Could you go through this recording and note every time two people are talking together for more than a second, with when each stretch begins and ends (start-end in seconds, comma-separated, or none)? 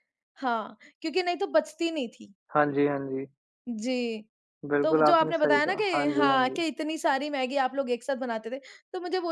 4.8-6.6